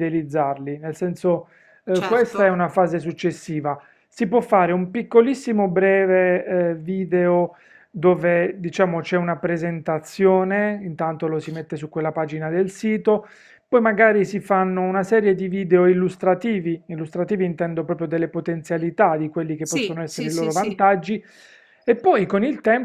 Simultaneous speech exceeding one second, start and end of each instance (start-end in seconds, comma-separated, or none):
19.6-20.8